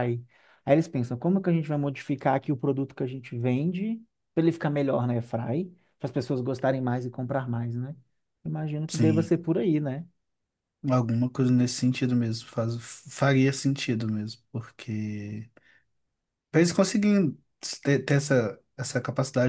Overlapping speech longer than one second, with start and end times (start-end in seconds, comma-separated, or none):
none